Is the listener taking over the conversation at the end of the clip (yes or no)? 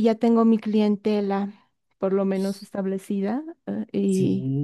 yes